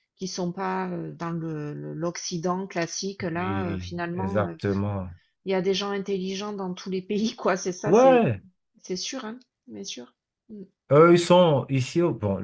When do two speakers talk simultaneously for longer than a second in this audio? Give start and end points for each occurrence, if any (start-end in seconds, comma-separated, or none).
3.4-4.5